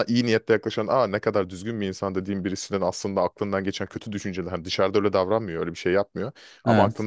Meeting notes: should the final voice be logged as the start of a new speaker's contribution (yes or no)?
no